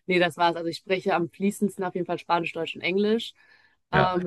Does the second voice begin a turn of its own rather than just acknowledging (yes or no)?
no